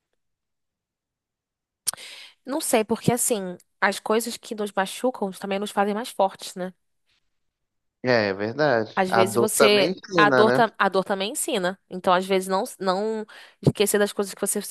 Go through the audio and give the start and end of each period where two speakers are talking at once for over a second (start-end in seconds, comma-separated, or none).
9.0-10.6